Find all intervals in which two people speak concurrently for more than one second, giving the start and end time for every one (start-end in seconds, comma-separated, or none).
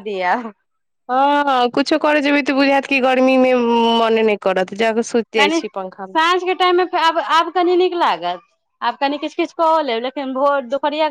none